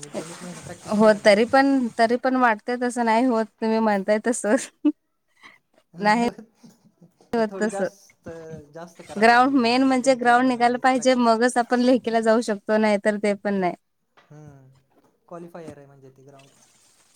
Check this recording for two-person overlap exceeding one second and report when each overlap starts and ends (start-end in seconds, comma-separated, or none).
9.2-11.3